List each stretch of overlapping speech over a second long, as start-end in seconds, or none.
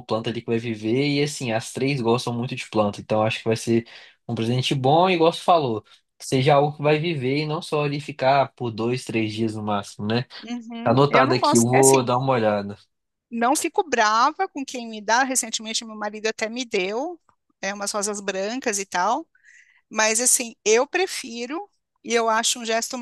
10.8-12.1